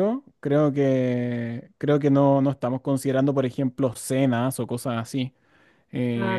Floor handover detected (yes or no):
no